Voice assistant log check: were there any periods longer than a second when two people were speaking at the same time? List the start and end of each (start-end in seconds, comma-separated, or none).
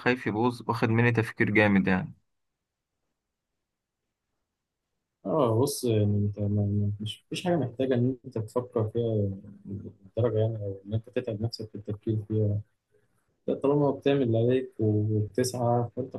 none